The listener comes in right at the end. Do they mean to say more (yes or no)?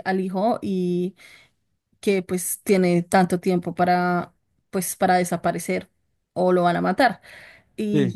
no